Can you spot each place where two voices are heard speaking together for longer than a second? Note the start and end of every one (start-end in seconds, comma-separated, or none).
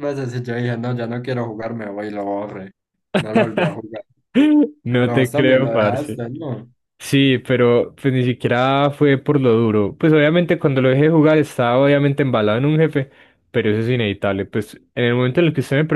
5.0-6.2